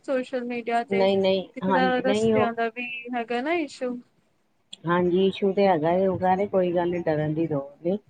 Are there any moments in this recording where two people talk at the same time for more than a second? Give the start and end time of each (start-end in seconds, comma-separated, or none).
1.0-2.5